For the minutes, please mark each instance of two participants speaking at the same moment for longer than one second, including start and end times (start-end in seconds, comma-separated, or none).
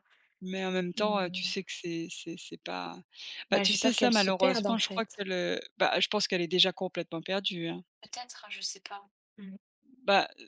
3.5-5.2